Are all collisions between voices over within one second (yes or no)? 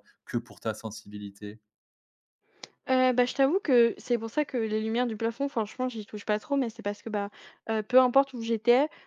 yes